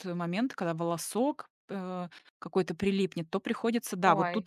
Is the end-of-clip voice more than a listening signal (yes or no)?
no